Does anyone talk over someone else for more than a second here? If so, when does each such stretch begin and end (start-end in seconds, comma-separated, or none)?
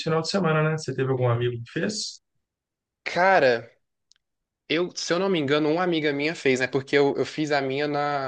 none